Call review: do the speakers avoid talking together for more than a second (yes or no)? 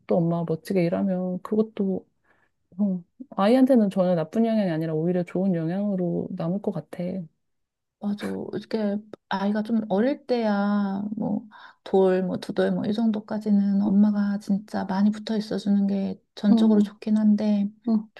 yes